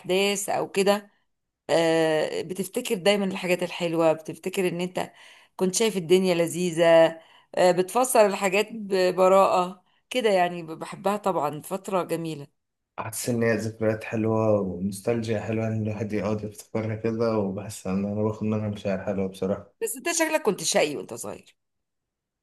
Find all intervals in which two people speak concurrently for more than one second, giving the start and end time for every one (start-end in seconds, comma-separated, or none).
none